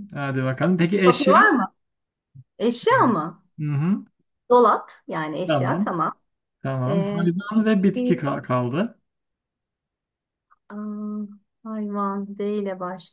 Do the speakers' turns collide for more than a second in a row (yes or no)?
yes